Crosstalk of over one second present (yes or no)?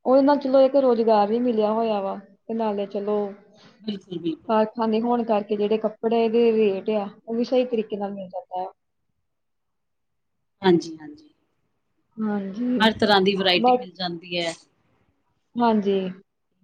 no